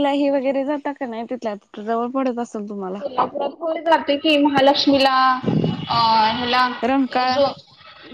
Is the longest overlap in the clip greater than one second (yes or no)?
no